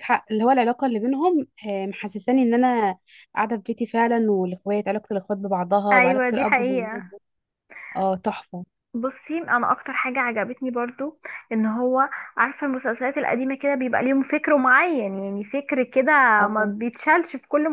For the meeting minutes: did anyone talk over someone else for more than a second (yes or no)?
yes